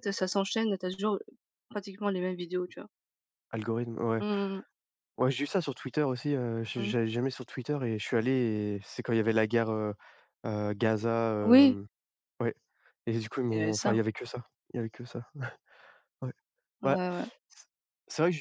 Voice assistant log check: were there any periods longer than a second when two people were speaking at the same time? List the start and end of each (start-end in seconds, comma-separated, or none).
none